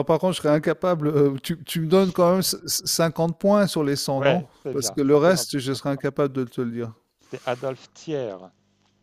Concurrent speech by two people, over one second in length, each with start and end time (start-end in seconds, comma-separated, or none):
4.1-5.5